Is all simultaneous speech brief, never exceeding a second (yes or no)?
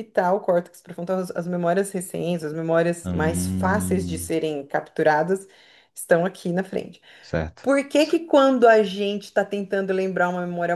no